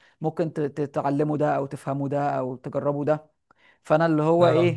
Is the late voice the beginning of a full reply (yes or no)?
no